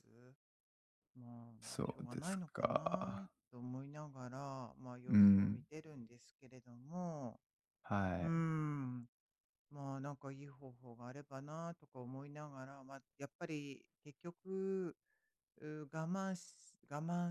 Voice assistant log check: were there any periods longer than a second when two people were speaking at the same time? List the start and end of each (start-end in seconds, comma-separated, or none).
1.6-3.3